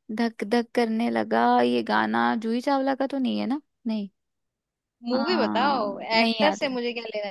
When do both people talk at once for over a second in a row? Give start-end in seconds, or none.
5.1-6.7